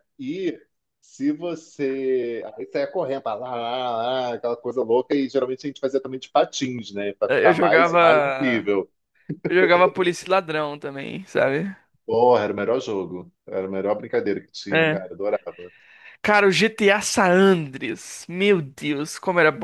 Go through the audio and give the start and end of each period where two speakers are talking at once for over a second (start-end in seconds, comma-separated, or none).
7.3-8.7